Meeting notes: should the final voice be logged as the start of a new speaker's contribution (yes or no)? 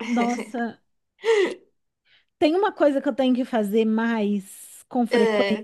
no